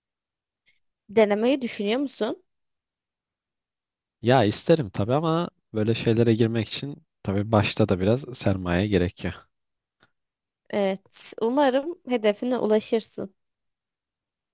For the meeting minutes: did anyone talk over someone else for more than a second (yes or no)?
no